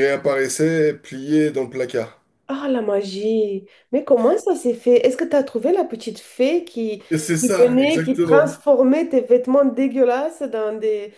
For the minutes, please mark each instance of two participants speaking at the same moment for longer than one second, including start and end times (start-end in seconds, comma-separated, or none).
7.4-8.6